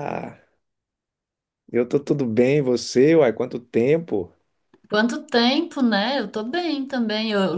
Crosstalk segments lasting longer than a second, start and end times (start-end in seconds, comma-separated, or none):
none